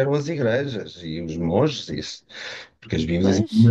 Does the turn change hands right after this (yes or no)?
no